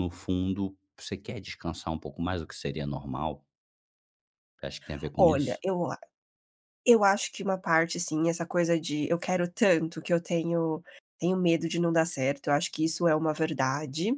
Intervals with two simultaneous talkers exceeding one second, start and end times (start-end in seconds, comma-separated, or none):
none